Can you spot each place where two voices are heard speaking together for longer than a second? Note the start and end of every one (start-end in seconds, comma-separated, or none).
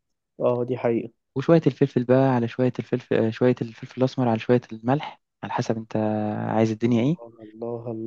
none